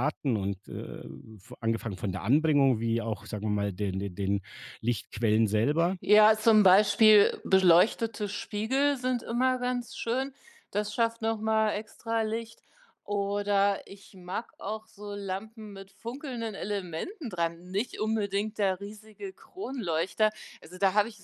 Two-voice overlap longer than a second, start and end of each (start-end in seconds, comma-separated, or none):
none